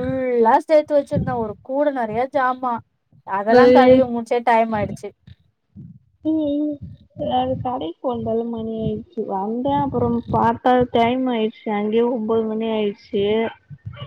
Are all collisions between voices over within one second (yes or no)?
yes